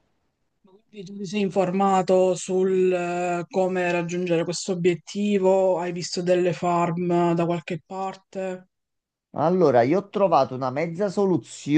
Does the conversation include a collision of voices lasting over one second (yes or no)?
no